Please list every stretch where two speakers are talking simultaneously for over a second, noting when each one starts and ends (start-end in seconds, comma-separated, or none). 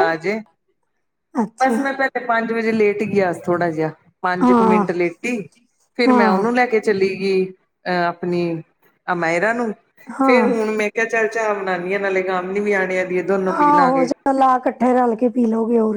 none